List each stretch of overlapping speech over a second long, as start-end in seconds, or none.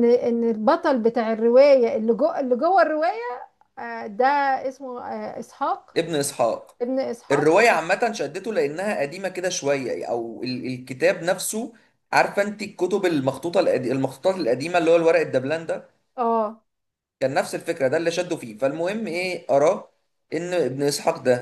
none